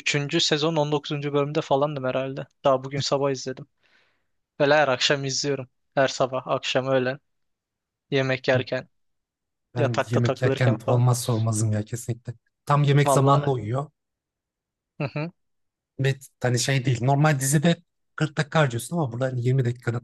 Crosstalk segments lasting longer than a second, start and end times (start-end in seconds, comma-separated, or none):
9.8-11.0